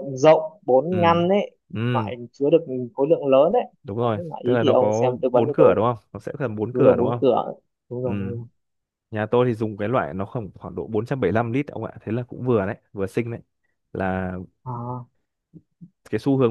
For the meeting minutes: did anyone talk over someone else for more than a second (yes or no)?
yes